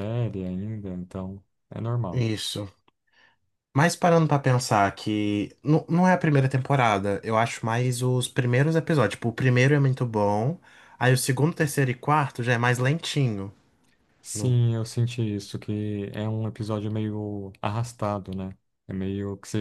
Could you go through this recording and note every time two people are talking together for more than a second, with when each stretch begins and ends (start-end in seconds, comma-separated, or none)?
none